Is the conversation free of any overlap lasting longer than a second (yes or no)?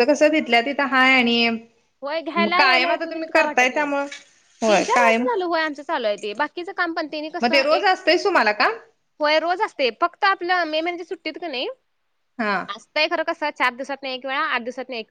no